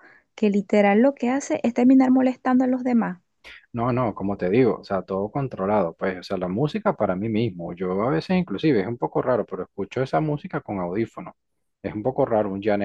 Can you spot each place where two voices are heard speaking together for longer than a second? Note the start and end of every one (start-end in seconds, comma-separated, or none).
none